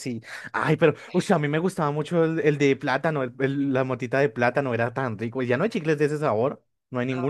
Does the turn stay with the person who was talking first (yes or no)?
no